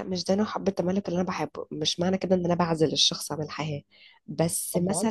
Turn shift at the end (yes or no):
no